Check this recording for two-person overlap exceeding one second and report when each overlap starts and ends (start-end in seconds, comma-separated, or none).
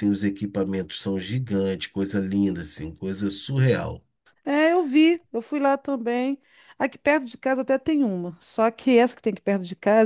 none